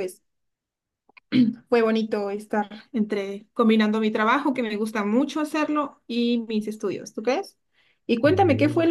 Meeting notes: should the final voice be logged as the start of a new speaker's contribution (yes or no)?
no